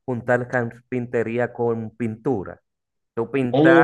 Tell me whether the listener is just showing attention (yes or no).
no